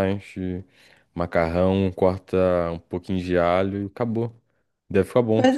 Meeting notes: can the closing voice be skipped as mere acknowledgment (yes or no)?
no